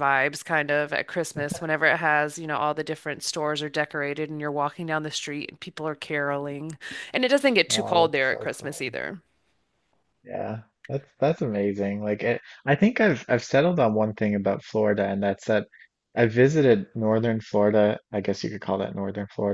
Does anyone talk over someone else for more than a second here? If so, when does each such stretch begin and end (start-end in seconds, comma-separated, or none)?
7.7-8.9